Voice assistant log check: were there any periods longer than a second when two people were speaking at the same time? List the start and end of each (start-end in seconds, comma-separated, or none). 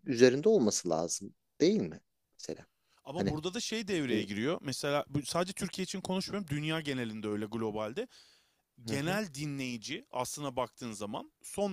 none